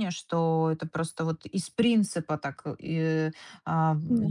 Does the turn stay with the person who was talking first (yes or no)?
yes